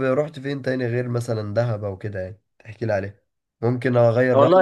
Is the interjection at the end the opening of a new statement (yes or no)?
yes